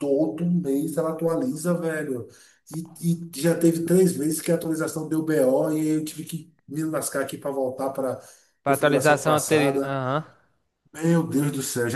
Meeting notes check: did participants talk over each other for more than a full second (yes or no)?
yes